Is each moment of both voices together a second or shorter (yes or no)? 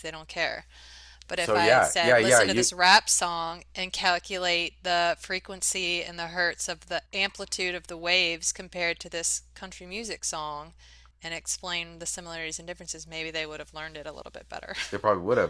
no